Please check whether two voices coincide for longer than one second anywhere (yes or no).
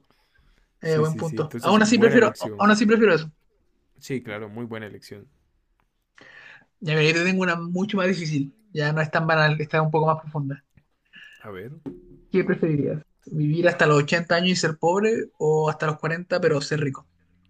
yes